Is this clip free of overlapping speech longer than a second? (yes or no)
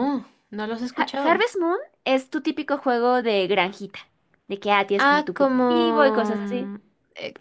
no